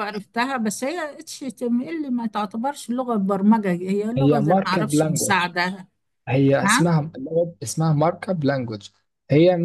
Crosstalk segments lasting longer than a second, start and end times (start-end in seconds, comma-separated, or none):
4.2-5.5